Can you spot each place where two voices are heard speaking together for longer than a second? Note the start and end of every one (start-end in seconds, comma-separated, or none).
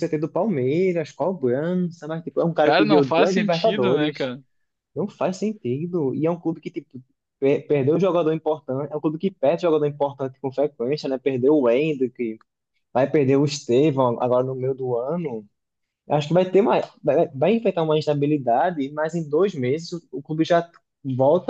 2.6-4.3